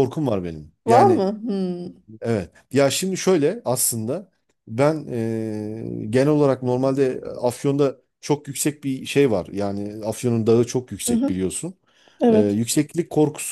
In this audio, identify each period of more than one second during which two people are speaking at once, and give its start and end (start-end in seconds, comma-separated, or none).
none